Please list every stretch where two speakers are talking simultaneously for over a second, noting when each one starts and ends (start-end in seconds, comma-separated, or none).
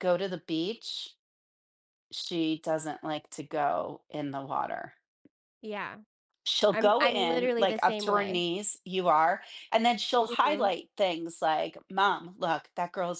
6.7-8.4